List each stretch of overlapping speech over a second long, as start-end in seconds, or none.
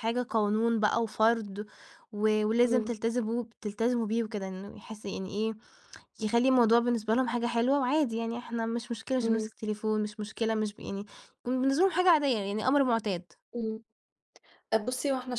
none